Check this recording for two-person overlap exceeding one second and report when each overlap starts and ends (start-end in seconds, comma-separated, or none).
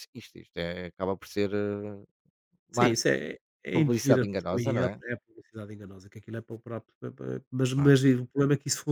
3.7-5.0